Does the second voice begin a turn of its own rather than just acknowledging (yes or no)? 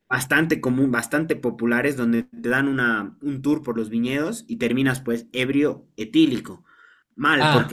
no